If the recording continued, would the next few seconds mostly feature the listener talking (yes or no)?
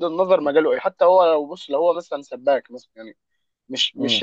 no